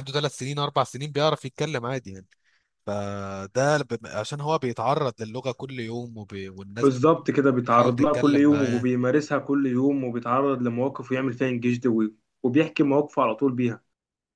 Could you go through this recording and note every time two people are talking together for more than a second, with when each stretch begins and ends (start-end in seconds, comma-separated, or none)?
7.6-8.9